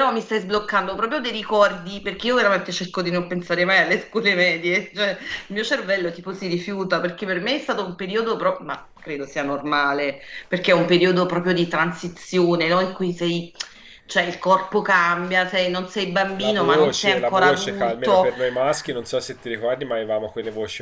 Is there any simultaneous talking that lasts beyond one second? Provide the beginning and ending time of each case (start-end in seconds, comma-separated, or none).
16.4-18.3